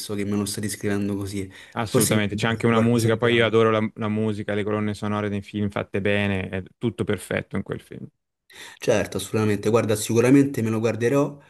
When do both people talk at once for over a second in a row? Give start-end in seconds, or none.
1.7-3.5